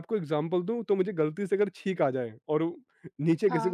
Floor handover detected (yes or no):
no